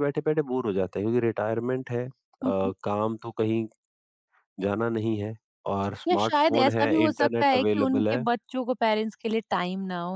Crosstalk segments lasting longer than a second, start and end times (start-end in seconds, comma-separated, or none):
6.1-8.2